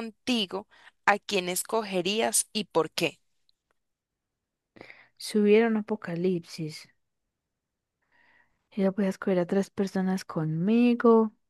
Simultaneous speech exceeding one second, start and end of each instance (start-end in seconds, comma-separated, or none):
none